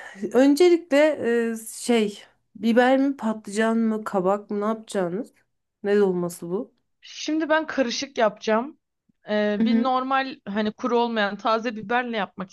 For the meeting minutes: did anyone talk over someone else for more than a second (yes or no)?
no